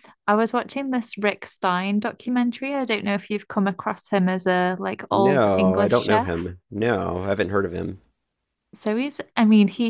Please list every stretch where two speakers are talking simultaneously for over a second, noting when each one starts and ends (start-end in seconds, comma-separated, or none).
5.1-6.3